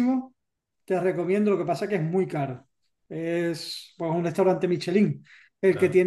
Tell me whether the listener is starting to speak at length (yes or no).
no